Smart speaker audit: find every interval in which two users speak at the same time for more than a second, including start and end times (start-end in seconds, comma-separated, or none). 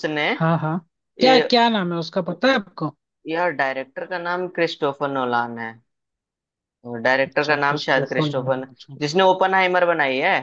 7.3-9.0